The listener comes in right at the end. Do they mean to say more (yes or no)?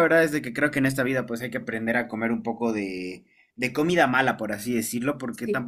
no